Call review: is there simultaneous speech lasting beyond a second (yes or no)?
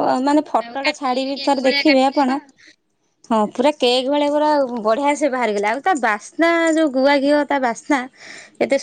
yes